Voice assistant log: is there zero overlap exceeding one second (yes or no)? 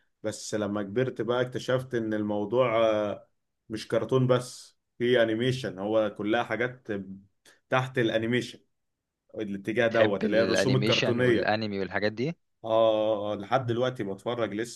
no